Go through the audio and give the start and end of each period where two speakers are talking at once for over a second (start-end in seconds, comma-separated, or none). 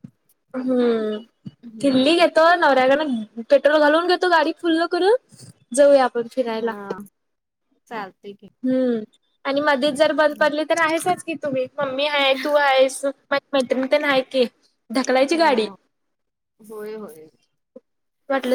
none